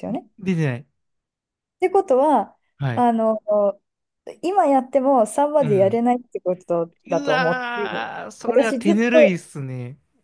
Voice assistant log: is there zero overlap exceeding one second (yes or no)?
no